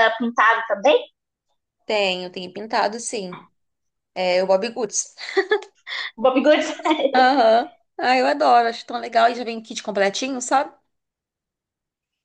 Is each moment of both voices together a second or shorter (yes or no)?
yes